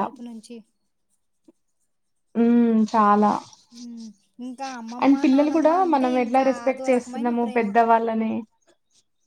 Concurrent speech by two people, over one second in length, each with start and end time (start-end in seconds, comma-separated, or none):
5.0-7.7